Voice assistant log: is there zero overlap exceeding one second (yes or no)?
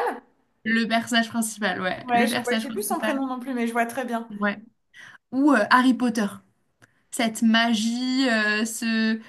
no